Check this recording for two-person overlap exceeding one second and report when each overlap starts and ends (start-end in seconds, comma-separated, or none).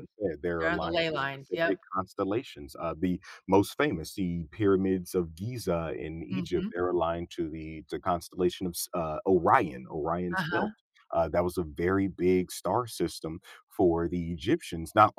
0.6-1.8